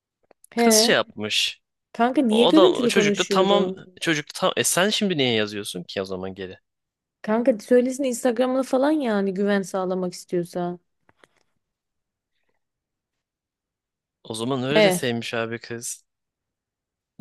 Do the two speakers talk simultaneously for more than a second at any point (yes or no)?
yes